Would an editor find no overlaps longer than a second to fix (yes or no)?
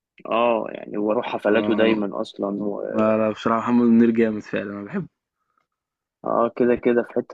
yes